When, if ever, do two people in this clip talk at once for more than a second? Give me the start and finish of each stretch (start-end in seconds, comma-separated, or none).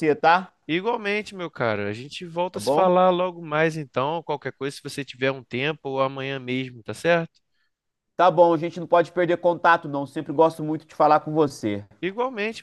none